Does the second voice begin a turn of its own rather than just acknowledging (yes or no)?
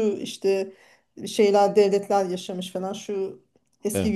no